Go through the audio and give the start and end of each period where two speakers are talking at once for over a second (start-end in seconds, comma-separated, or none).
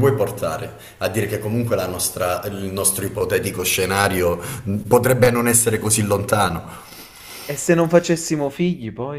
none